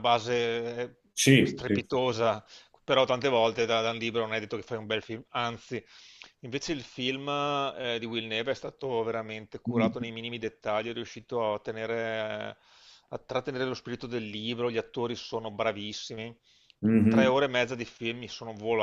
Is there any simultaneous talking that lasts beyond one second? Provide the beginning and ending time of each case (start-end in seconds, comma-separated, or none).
none